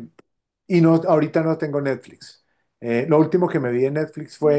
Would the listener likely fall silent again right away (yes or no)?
yes